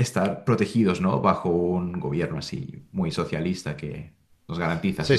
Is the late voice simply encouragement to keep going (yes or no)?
no